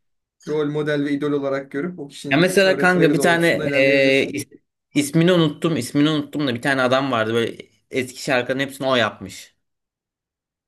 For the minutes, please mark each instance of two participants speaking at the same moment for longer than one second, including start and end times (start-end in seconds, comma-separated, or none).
2.3-4.3